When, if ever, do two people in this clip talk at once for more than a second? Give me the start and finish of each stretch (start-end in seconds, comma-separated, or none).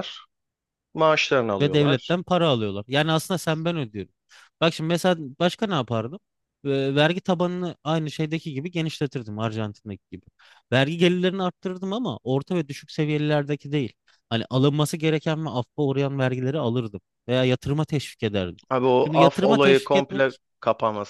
19.0-20.4